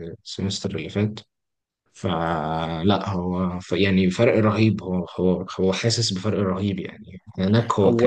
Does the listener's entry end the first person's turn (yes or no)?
no